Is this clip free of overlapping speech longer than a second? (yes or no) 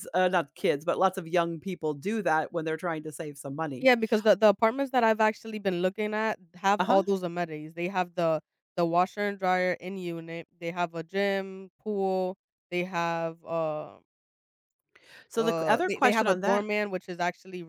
no